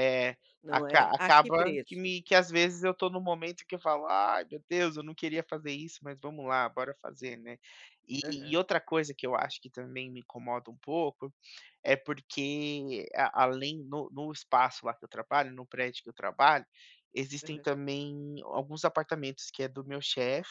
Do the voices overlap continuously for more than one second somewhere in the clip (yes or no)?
yes